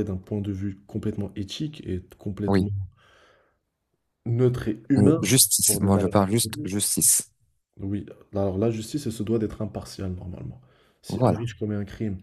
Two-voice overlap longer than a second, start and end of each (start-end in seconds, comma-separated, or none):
5.0-6.7